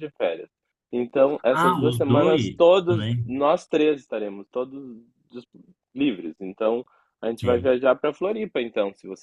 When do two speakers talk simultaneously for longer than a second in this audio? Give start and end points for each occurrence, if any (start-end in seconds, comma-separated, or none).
1.5-3.4